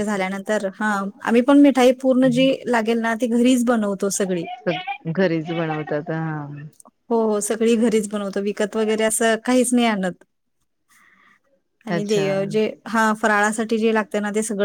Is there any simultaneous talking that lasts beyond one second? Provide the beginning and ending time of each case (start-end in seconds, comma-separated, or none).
none